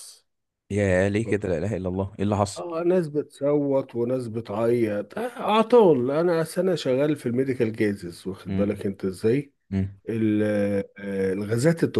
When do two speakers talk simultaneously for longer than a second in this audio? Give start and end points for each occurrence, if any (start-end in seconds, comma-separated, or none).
none